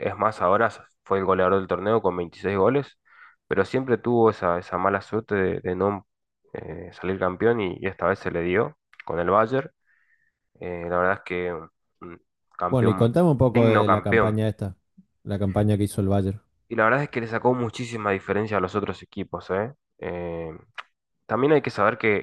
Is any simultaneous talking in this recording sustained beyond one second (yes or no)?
yes